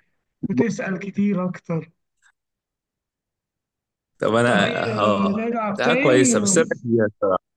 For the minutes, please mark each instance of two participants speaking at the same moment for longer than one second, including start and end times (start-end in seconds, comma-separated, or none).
4.5-6.3